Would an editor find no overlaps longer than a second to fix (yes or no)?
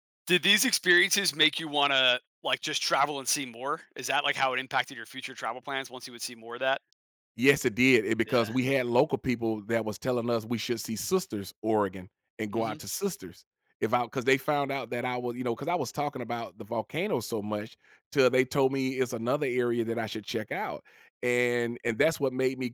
yes